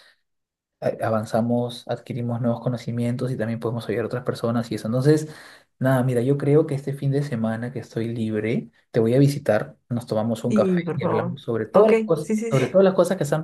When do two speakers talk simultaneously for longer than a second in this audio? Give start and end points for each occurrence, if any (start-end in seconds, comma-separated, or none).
10.5-12.6